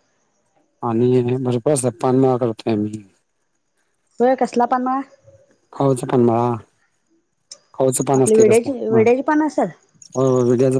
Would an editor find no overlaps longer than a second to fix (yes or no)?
no